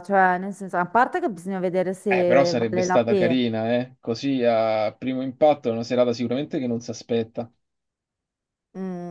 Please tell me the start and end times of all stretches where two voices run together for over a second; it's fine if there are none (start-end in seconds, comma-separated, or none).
2.1-3.4